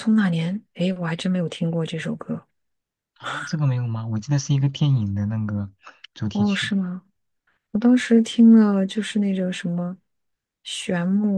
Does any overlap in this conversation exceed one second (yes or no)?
no